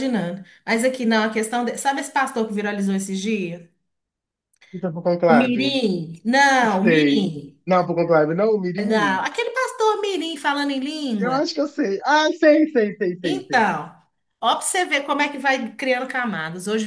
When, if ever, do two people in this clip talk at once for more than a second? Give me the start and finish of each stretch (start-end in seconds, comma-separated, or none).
none